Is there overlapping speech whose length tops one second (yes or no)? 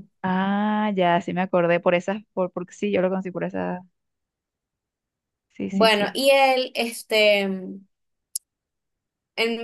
no